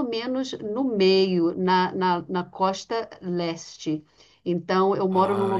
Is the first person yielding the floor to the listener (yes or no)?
no